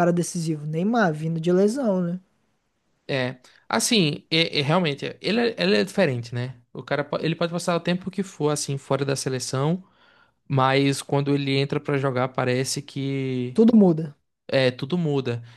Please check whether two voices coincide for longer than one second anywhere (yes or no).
no